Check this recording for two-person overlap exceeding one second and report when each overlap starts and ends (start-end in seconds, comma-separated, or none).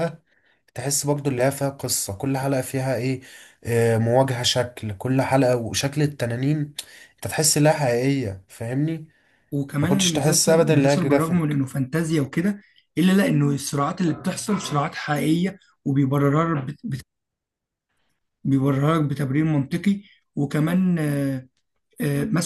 9.8-11.6